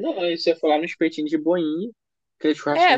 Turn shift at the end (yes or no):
yes